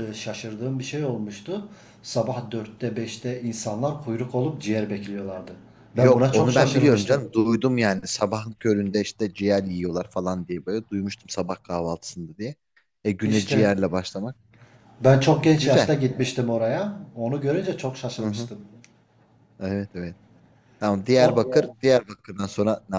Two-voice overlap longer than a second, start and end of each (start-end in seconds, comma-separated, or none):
6.0-7.2